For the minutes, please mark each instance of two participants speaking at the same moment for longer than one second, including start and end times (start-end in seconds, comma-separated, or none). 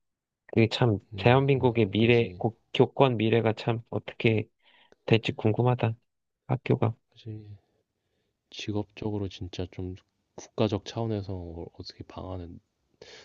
1.1-2.4